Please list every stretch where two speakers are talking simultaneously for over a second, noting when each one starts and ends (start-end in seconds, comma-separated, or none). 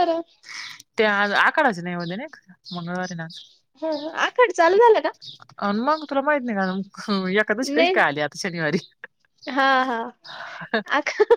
none